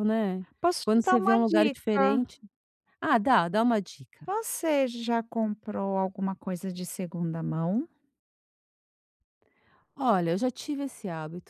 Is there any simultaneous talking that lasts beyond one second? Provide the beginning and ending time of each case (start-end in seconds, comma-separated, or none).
0.8-2.2